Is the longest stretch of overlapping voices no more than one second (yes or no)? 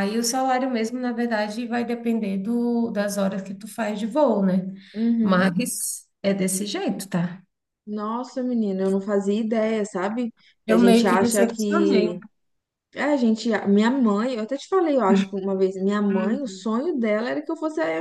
no